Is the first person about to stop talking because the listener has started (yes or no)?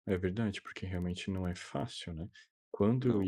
no